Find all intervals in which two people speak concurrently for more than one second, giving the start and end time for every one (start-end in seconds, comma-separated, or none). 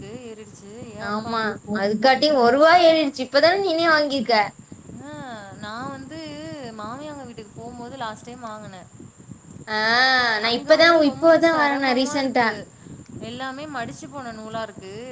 10.5-12.5